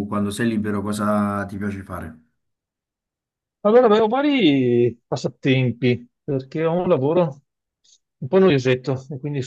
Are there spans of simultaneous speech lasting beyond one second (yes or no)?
no